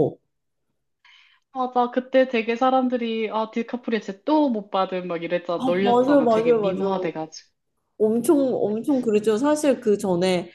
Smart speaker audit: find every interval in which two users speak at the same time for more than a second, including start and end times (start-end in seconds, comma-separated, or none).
5.6-7.1